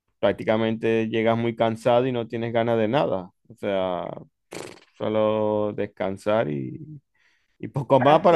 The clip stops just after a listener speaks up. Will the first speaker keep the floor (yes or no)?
yes